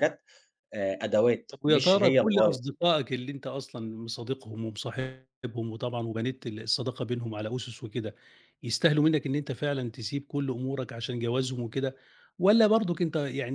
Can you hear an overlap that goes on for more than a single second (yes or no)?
yes